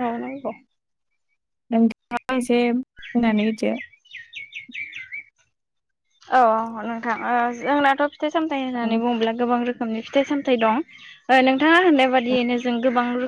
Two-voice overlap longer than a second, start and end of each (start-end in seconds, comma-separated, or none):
none